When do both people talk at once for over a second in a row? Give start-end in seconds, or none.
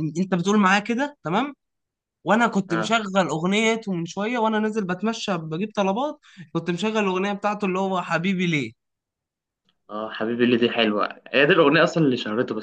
none